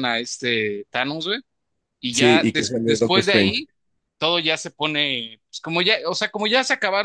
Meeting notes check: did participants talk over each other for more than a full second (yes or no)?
yes